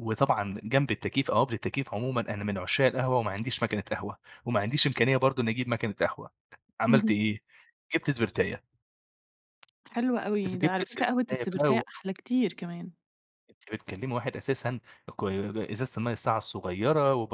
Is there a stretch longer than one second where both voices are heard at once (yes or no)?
yes